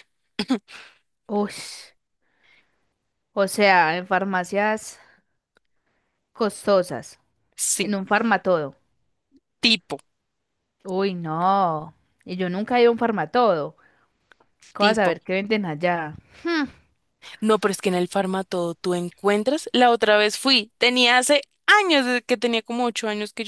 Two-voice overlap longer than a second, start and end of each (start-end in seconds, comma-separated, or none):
none